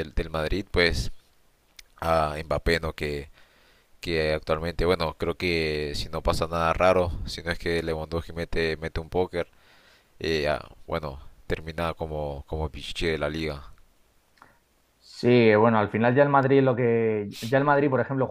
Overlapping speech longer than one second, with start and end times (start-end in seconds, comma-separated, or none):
none